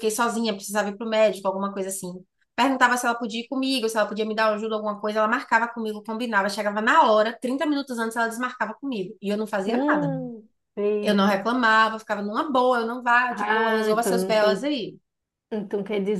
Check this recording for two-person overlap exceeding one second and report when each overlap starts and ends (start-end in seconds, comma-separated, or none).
13.3-14.7